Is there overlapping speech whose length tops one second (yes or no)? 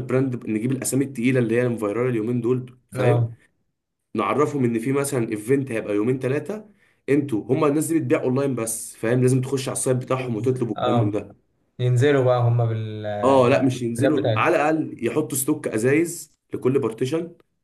yes